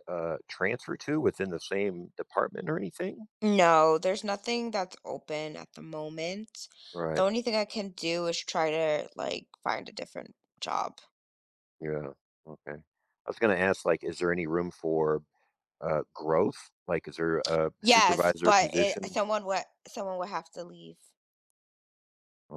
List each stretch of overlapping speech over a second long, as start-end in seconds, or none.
17.8-19.2